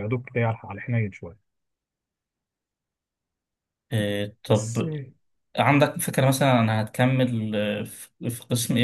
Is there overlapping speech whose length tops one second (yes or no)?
no